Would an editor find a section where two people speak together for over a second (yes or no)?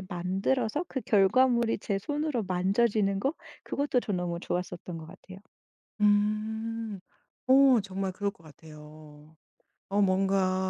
no